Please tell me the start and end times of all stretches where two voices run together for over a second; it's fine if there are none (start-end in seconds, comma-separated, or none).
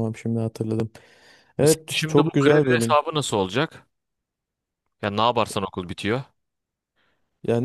1.6-3.0